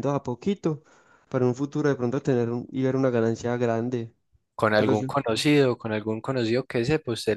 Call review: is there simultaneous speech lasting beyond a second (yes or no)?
no